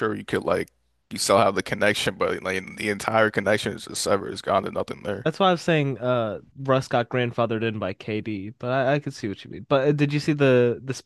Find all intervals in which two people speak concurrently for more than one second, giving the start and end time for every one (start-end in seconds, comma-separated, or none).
none